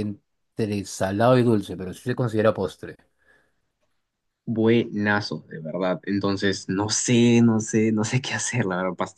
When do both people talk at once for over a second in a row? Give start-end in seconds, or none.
none